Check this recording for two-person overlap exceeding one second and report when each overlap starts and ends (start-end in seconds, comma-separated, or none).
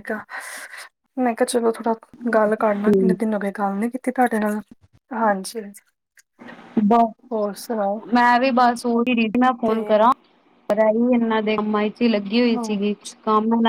none